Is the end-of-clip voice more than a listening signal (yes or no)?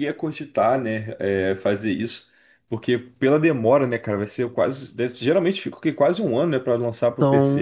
yes